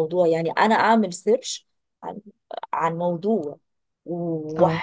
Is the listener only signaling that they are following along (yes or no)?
yes